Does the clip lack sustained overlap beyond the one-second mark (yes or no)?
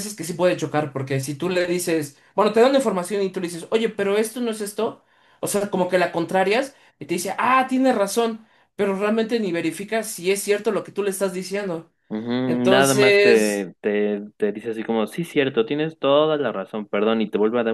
no